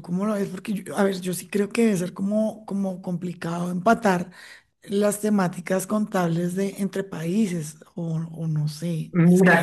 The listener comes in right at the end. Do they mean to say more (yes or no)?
yes